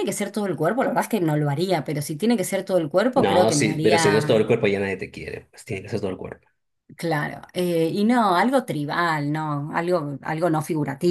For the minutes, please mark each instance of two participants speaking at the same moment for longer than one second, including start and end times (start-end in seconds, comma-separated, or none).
3.1-4.5